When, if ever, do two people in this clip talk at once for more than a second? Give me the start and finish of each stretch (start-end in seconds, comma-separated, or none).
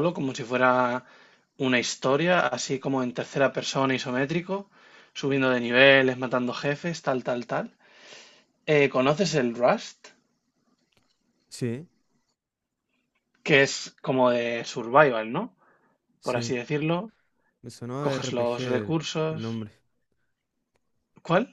18.0-19.7